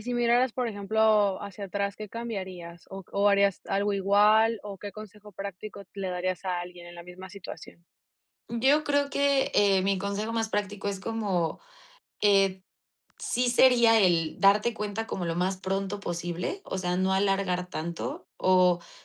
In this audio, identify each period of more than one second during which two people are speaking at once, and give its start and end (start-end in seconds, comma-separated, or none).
none